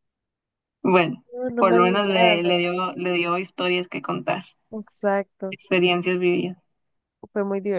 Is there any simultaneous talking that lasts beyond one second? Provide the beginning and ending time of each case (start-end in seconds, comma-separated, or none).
1.3-2.8